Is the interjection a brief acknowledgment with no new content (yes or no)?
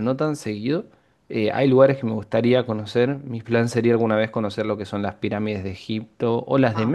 yes